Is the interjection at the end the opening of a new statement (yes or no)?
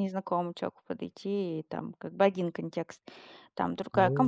yes